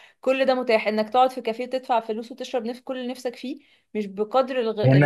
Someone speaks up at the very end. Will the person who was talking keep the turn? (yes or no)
no